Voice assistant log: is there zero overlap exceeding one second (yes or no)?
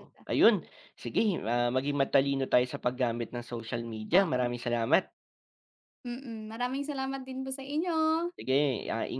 yes